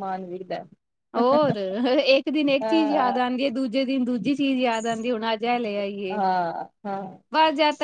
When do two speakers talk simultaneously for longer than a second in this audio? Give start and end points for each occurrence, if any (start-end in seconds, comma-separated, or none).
none